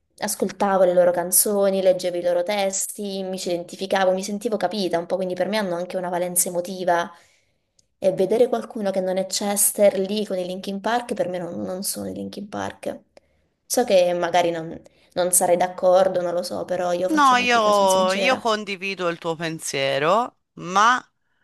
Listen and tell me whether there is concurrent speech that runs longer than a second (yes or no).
yes